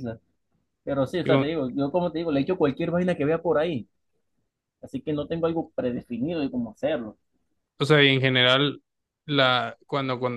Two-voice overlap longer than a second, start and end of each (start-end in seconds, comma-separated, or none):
none